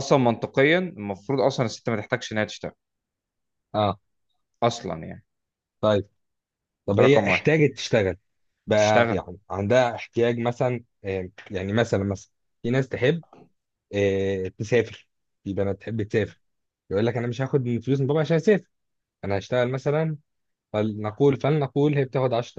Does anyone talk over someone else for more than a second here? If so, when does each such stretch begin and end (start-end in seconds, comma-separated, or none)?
none